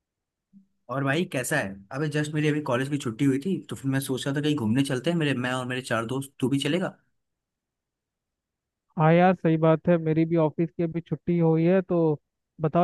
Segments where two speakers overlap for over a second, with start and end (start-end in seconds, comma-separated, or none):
none